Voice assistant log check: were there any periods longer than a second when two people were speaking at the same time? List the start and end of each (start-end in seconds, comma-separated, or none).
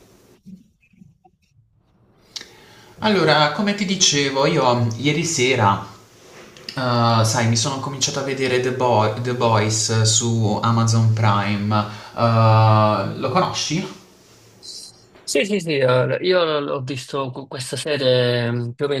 none